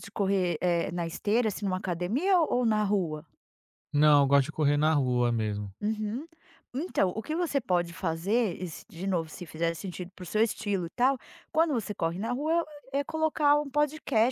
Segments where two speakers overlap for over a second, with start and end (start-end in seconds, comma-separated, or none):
none